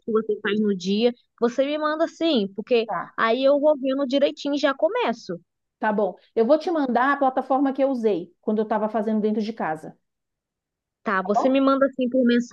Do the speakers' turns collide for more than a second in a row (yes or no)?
no